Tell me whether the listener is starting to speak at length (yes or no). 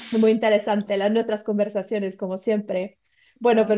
no